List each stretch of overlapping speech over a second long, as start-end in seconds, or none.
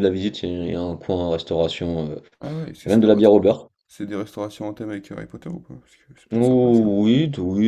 none